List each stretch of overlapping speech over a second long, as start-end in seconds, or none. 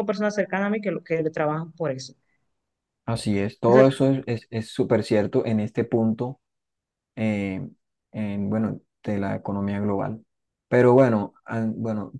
none